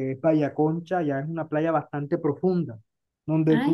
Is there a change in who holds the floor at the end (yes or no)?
no